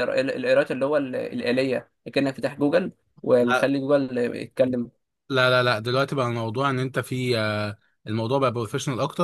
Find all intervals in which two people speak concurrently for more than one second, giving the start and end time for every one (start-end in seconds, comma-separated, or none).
none